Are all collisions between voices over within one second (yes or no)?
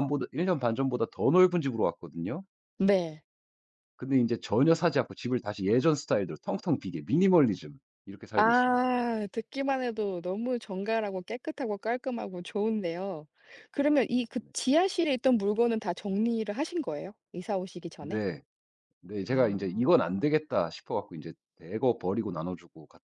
yes